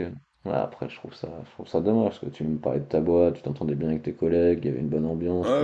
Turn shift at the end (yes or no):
yes